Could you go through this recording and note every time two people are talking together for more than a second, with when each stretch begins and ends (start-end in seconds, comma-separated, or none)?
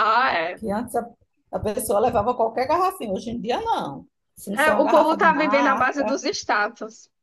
4.5-6.2